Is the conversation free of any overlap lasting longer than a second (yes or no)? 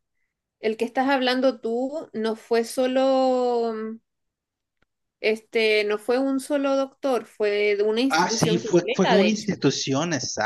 no